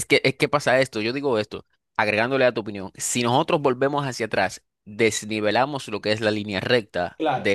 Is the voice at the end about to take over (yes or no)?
no